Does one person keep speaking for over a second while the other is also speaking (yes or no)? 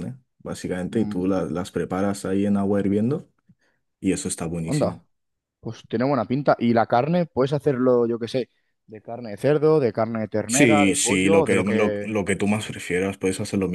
yes